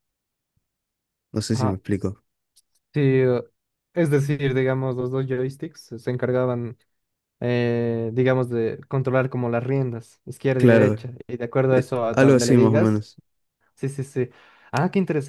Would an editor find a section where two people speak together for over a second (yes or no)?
yes